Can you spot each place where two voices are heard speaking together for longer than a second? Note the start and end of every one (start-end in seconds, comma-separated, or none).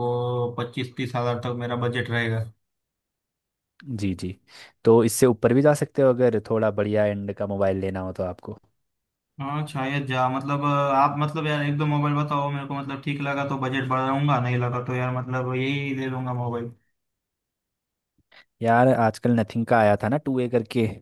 none